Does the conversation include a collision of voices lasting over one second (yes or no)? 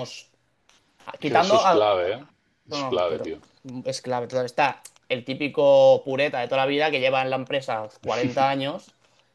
no